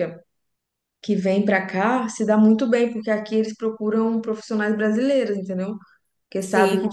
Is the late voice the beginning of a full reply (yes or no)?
no